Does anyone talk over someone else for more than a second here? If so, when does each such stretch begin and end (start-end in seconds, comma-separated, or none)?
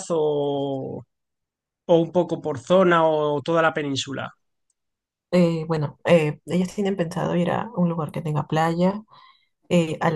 none